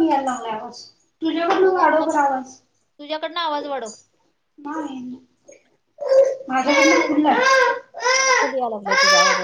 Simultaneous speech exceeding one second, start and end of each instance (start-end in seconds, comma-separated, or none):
none